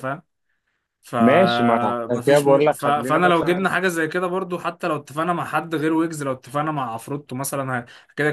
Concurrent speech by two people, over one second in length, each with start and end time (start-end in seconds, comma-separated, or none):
1.2-3.7